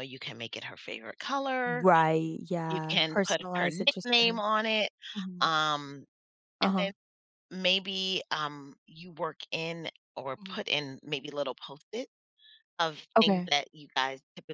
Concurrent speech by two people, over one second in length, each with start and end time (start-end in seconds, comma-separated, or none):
2.7-4.4